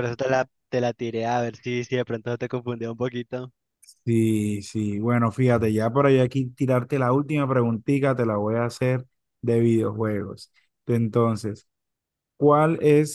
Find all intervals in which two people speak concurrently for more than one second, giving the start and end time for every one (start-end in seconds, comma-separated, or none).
none